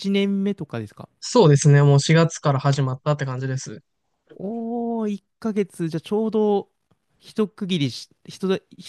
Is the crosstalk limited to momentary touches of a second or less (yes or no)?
yes